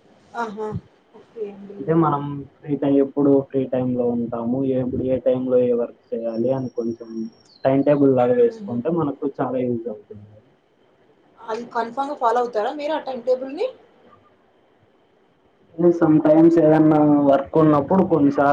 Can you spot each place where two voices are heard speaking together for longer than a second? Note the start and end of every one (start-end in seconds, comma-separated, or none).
none